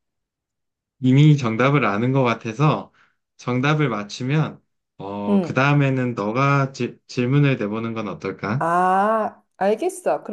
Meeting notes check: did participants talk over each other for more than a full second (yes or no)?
no